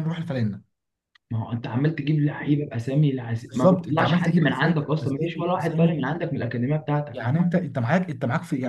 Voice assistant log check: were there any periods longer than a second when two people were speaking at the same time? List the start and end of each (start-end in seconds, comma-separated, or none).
3.5-6.0